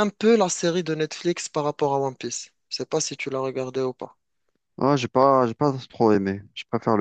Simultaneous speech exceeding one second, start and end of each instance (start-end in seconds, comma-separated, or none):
none